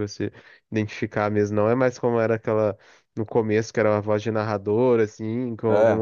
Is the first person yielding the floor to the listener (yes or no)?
no